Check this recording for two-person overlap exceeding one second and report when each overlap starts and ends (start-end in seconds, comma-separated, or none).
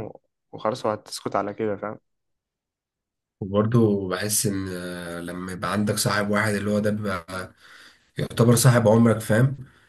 none